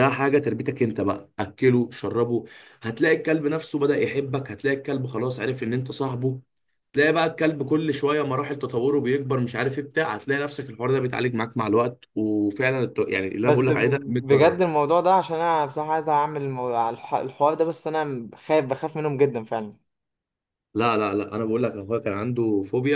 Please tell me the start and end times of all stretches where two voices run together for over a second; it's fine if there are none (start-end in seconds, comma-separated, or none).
13.4-14.7